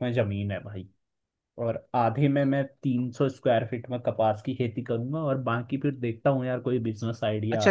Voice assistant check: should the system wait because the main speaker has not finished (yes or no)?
no